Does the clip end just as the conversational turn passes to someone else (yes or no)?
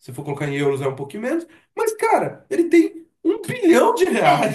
yes